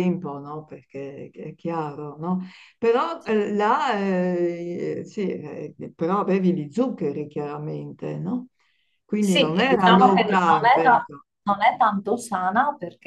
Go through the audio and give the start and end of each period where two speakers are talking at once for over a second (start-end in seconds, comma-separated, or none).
9.2-11.2